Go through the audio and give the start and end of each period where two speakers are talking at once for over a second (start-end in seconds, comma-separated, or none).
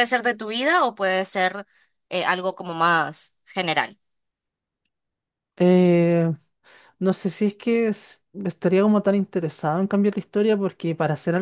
none